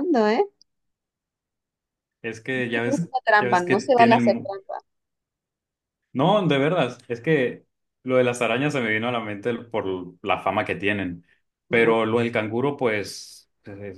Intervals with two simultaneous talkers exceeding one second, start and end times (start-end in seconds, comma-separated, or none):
2.8-4.5